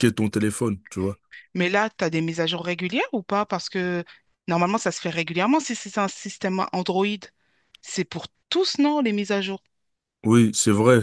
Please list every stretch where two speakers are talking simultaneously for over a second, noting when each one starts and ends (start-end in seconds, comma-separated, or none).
none